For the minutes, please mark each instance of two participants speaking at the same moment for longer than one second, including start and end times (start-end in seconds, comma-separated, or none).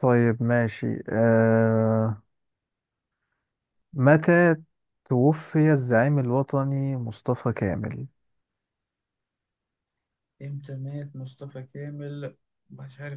none